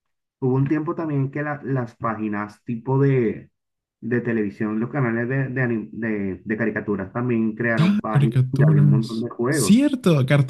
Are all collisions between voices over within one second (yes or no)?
no